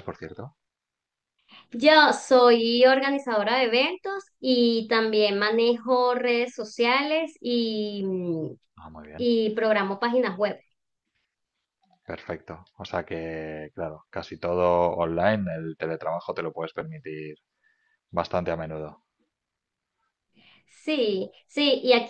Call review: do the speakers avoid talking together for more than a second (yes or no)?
yes